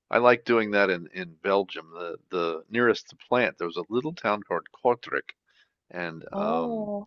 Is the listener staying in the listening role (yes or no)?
yes